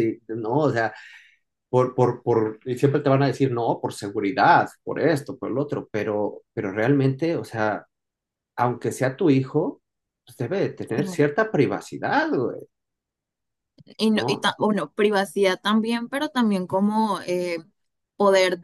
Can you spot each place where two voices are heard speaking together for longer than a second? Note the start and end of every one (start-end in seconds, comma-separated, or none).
none